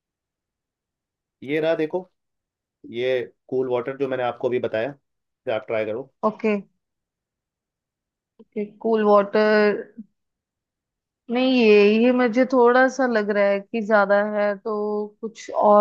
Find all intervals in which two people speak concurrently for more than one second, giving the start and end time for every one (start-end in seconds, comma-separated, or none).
none